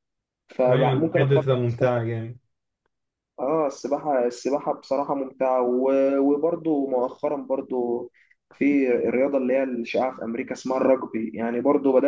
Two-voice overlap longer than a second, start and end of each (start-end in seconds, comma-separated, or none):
0.7-1.9